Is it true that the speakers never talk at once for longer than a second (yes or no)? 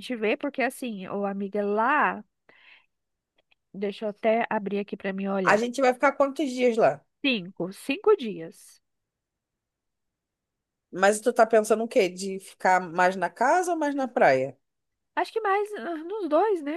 yes